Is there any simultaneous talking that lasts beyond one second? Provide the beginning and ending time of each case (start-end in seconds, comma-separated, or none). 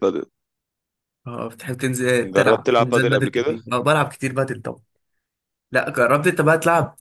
2.2-3.6